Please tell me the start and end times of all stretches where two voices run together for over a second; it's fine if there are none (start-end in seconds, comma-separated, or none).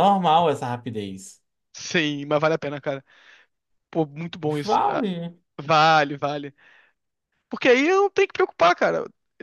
none